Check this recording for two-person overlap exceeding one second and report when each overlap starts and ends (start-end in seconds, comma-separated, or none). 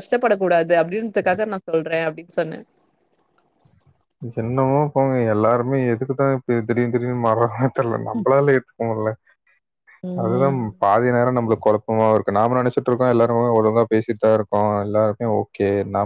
none